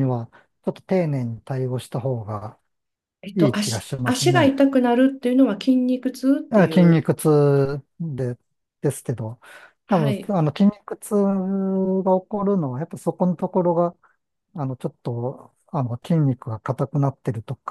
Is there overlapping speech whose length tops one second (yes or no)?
yes